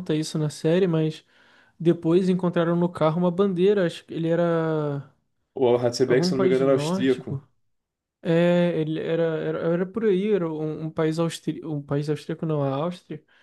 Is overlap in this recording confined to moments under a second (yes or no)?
no